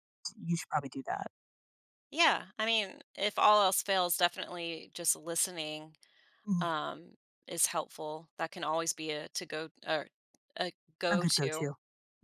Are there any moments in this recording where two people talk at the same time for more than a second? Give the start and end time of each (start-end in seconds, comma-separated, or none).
none